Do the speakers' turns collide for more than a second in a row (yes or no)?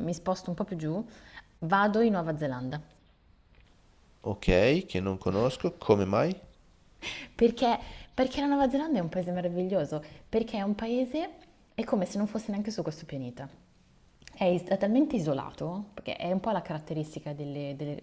no